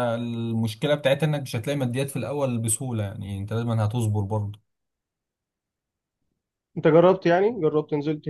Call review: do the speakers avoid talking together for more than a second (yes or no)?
yes